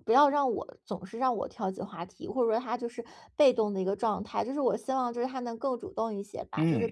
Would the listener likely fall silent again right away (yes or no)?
yes